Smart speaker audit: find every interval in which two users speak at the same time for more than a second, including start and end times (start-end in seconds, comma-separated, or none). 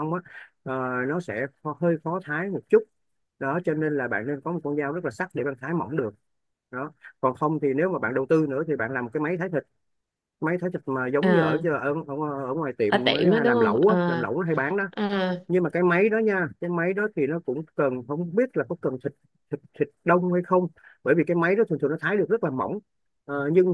12.9-14.3